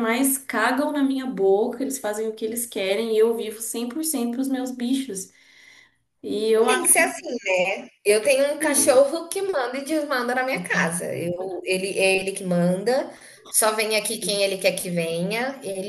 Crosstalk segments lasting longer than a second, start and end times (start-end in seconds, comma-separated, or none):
none